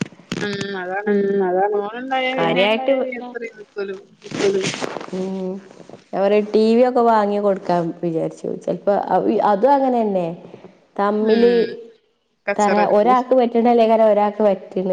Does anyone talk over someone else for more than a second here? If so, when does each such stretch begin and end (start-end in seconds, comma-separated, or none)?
none